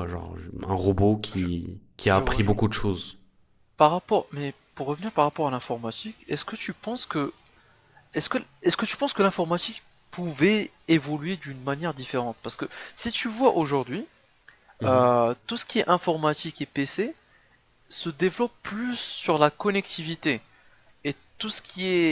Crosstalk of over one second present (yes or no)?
no